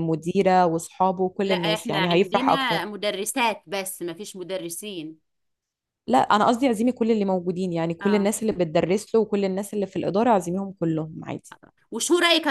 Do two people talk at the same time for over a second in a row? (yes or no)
yes